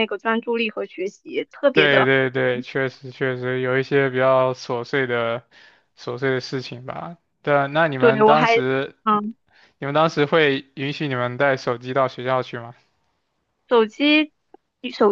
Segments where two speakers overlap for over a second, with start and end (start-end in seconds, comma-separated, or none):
none